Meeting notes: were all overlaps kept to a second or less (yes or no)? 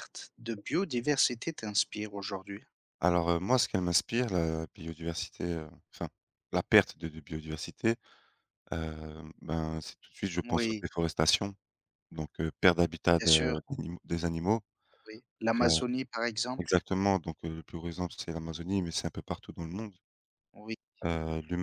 yes